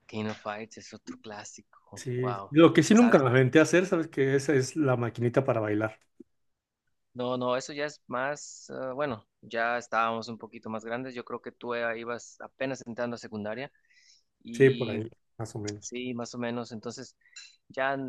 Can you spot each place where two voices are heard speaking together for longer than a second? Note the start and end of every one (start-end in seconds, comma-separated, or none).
none